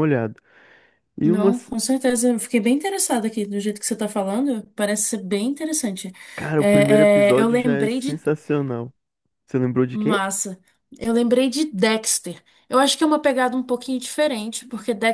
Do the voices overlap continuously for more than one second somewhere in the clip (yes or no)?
yes